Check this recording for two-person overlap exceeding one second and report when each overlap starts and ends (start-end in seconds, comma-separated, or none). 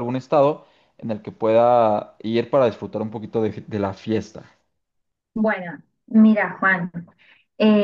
none